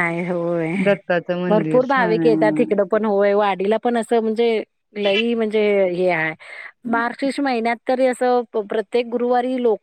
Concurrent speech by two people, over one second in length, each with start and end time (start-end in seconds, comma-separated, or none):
1.5-2.8